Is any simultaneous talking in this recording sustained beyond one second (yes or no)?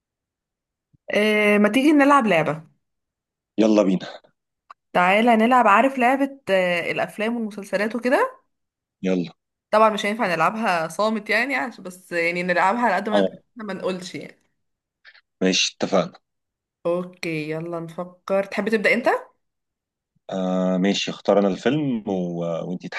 no